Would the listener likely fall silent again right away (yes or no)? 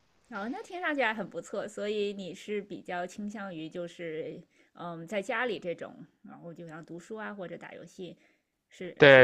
no